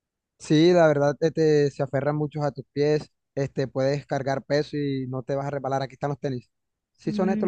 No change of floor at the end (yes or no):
no